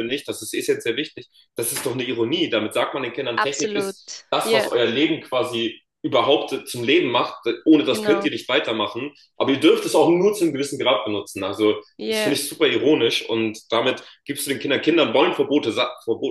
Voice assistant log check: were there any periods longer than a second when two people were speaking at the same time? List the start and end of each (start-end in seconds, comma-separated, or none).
3.4-4.7